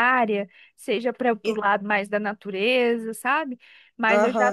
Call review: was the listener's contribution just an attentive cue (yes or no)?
no